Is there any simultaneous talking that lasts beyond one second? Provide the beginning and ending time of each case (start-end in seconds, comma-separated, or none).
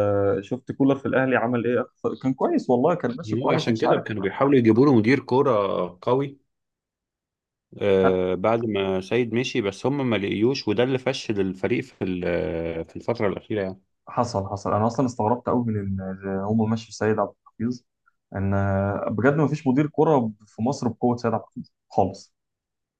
none